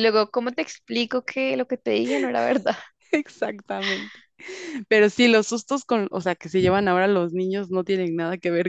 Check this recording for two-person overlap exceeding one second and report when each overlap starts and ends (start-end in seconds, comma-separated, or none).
none